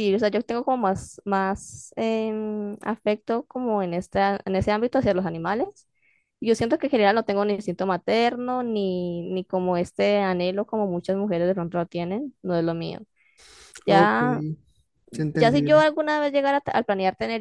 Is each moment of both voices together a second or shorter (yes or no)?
yes